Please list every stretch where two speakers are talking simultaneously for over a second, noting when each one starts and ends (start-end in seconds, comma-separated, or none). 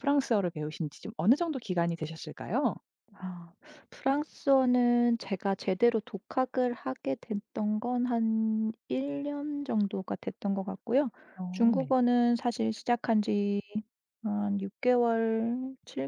none